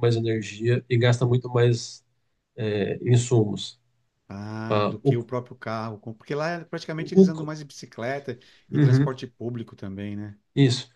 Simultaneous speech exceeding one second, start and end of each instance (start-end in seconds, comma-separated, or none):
none